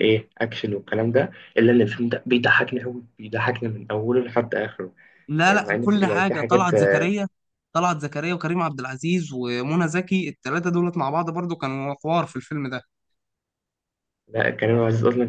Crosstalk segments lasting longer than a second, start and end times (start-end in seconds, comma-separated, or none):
5.5-6.7